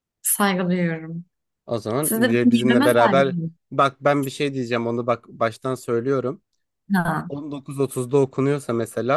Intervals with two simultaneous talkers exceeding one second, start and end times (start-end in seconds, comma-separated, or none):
2.0-3.4